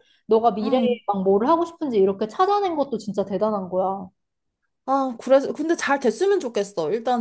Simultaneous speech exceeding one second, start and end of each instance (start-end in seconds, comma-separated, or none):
none